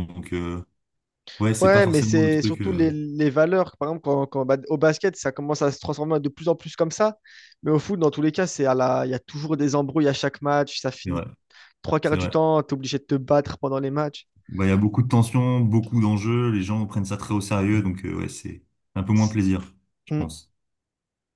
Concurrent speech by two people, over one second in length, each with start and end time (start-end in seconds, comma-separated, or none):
1.6-2.9